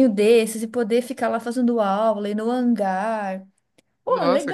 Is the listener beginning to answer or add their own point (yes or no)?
yes